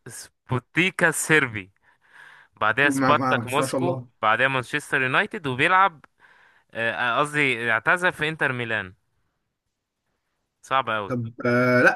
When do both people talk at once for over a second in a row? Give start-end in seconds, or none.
2.8-4.1